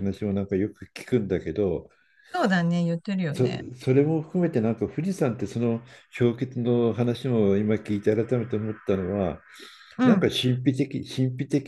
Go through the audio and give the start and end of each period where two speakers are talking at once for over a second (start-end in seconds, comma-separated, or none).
none